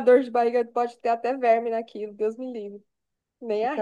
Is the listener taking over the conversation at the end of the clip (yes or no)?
yes